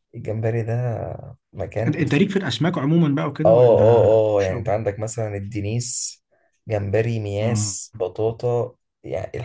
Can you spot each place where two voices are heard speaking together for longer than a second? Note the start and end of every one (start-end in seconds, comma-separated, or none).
3.5-4.8